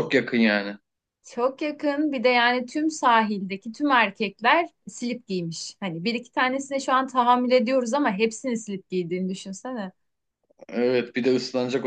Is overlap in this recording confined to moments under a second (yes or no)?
yes